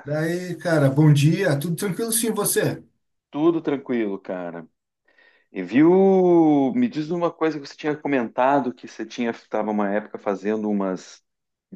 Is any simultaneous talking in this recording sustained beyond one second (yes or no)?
no